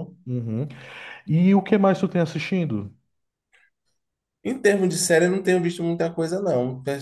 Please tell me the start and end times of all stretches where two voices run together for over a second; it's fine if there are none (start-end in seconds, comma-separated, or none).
none